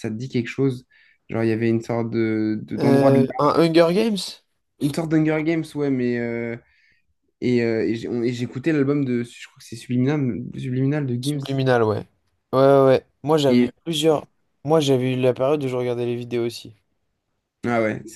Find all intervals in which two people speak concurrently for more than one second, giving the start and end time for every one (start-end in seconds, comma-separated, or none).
none